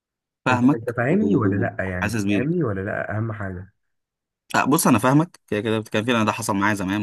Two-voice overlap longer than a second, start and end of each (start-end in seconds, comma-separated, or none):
0.5-2.5